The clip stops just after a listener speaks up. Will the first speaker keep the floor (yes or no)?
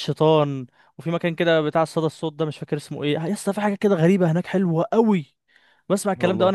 yes